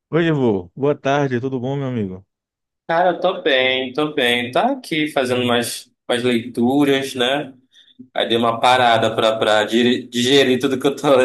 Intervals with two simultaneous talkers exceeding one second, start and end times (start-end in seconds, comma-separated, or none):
none